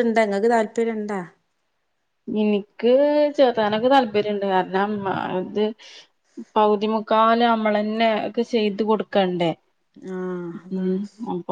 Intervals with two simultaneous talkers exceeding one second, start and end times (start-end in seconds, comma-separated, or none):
none